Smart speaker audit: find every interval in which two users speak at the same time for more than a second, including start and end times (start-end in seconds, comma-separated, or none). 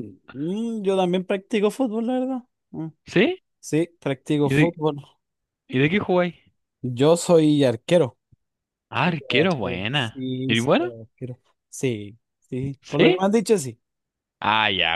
9.0-10.9